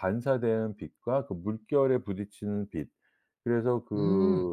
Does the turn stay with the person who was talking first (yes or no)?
yes